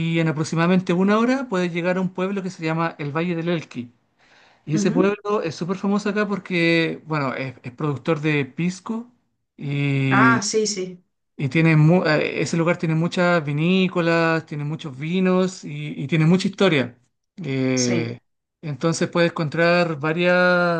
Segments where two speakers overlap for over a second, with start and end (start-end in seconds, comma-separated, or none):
none